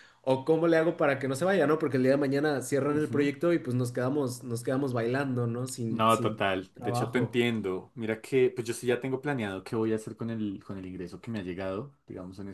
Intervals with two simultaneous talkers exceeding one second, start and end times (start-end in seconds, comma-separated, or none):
5.9-7.4